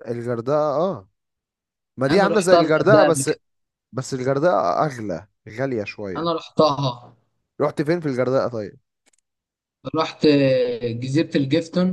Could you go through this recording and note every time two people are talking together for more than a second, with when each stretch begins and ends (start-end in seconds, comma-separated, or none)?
2.1-3.3